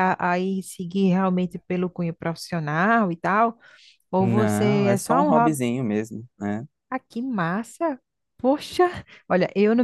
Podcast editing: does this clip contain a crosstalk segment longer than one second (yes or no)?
yes